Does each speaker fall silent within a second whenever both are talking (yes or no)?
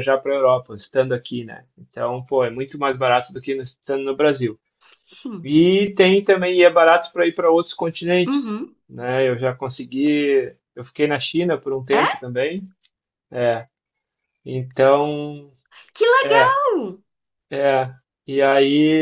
yes